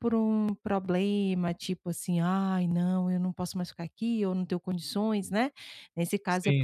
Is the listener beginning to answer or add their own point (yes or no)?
no